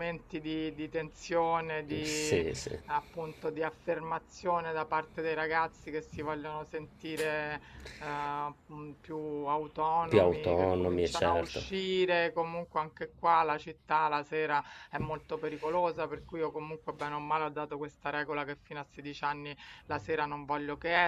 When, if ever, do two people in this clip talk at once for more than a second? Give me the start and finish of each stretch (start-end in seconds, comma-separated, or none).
10.1-11.7